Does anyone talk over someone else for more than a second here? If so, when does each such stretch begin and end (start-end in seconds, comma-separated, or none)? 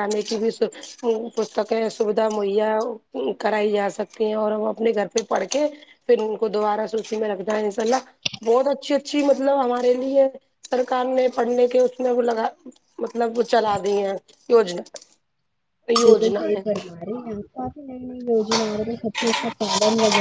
none